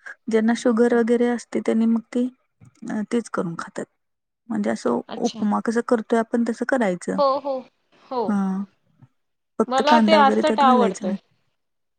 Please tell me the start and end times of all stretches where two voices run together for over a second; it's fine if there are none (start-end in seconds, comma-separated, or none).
9.7-11.2